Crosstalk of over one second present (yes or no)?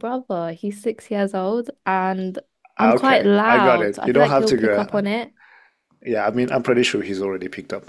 yes